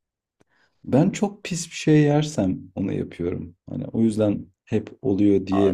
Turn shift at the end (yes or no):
yes